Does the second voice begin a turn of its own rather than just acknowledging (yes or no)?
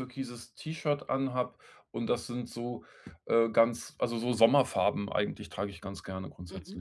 yes